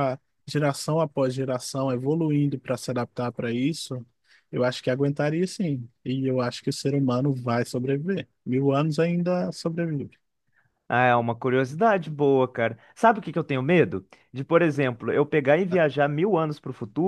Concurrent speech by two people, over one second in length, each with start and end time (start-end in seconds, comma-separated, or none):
none